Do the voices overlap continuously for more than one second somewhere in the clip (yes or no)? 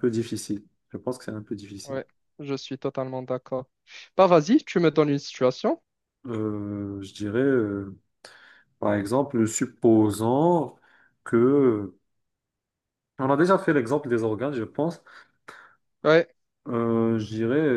no